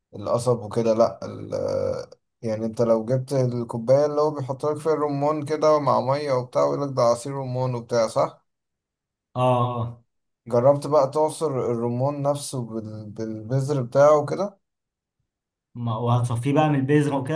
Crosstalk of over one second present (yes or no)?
no